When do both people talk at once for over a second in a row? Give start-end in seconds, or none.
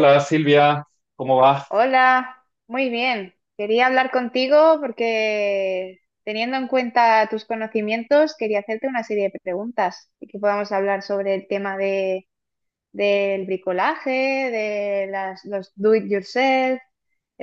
none